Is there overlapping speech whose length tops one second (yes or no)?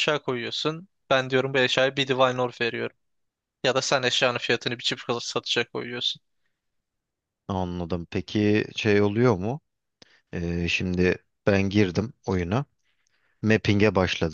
no